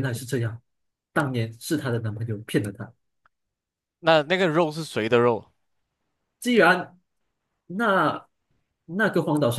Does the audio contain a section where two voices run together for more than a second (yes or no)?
no